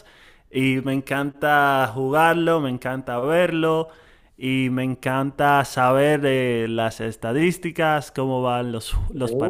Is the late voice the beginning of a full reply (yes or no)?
no